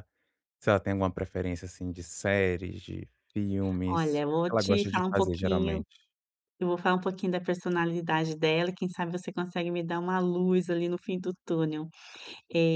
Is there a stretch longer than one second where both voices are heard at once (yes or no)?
yes